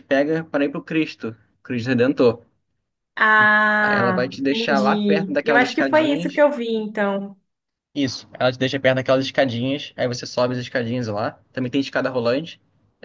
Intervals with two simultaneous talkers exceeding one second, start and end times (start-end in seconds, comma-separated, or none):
3.8-6.4